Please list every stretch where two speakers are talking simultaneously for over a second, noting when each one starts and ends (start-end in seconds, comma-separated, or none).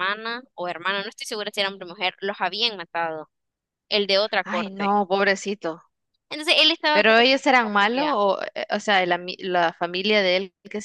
6.9-8.2